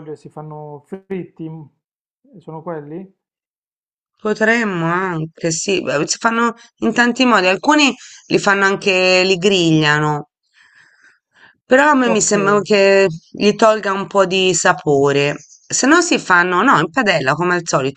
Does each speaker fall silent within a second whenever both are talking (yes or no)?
yes